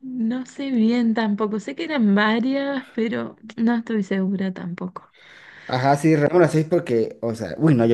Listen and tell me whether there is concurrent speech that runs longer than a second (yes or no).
no